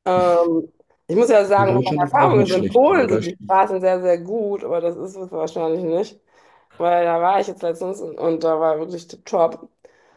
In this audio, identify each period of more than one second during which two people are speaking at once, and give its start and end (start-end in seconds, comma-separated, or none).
1.6-3.8